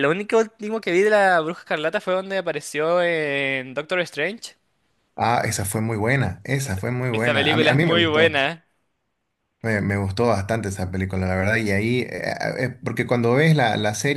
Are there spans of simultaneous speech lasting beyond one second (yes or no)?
yes